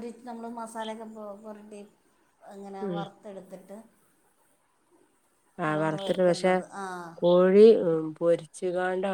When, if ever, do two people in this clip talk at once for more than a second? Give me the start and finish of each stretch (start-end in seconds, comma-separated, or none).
none